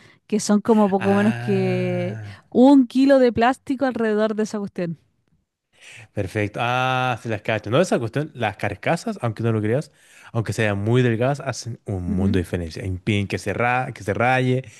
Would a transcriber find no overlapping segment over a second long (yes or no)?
no